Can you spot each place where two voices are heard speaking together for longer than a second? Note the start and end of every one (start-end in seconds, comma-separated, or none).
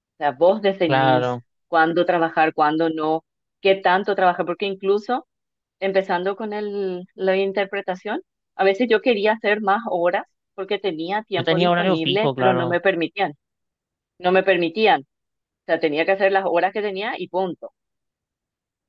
11.3-12.8